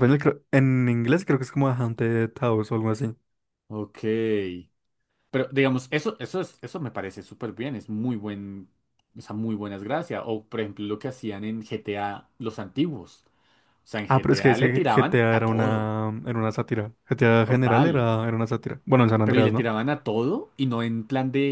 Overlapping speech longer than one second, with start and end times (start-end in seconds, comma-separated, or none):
14.1-15.9